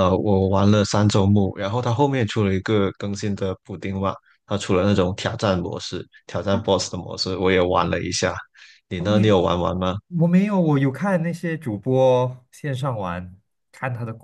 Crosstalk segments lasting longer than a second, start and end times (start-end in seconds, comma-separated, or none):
none